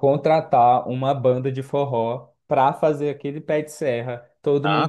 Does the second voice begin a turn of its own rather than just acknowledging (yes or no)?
yes